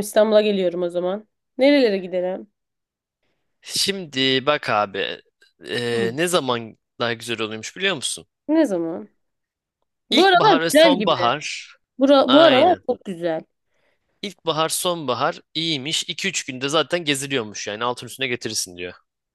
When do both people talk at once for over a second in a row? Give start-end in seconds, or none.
10.1-11.3